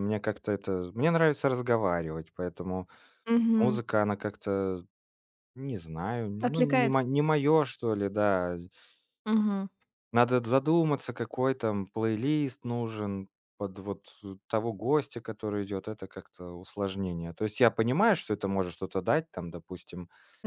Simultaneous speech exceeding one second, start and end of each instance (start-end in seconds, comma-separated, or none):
none